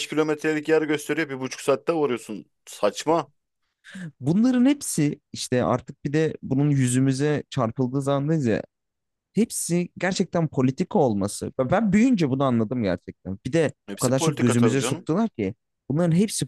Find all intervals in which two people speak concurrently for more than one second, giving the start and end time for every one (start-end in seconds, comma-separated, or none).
13.9-15.1